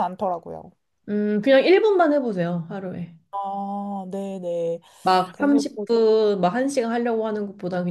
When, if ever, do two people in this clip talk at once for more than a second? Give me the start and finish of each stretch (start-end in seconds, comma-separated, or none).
none